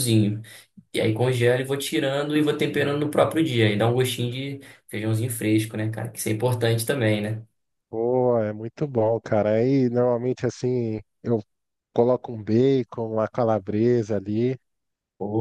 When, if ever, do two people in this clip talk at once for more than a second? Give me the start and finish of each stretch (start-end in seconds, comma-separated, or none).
none